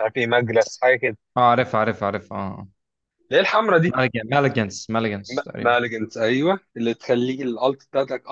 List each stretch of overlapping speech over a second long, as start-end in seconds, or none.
none